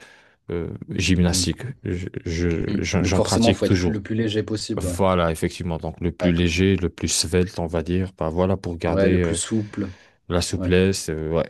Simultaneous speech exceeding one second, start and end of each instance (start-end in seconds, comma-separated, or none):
2.7-4.0